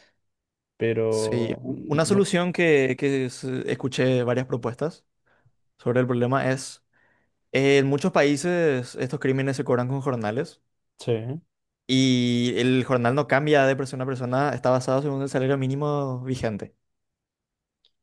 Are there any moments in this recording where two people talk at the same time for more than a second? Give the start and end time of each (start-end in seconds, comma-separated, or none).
1.1-2.4